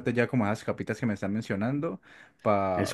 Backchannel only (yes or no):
yes